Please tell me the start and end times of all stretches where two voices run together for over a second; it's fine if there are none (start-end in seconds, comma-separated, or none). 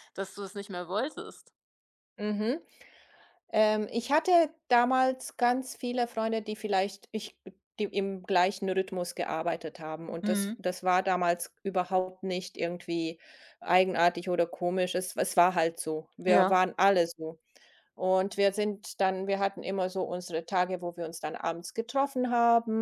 none